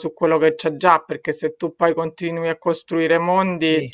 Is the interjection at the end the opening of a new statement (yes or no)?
no